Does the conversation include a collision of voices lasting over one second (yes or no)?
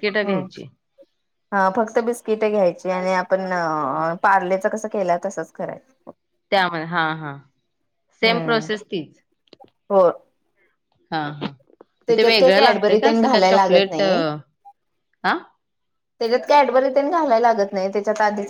yes